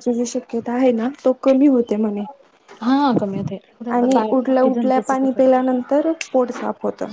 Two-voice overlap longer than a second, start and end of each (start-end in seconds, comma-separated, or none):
4.0-5.3